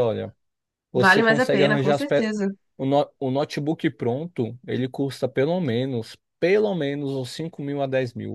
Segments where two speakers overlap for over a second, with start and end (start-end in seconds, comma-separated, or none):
0.9-2.2